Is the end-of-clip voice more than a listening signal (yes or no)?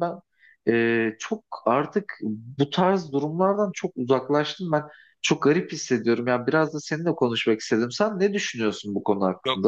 yes